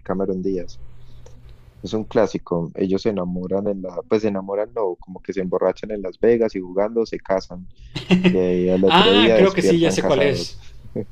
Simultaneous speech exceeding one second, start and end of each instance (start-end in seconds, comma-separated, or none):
8.9-10.6